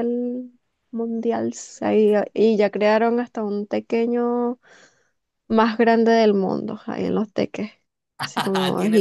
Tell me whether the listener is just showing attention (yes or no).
no